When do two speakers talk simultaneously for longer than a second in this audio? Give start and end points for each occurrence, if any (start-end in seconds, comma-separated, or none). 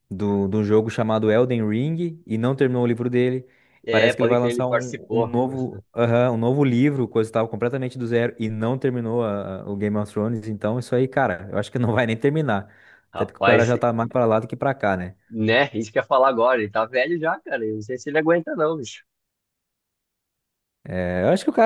3.9-5.4